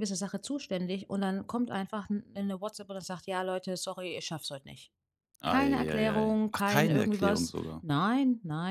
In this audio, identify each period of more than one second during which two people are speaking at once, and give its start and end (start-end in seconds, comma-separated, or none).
5.4-7.8